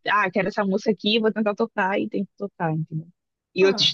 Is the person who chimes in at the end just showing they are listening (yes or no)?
yes